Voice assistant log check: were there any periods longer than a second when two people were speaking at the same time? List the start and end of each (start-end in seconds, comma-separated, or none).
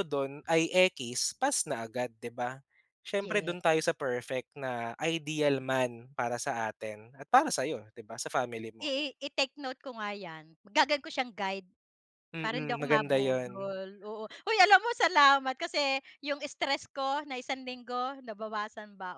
12.4-13.7